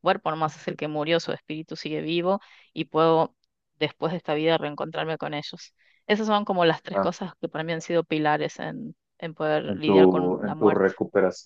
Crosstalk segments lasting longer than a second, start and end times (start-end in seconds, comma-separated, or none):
9.7-10.9